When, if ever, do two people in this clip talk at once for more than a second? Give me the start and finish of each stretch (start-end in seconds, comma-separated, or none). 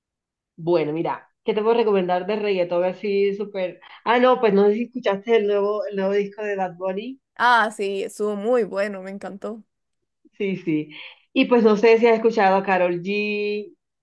none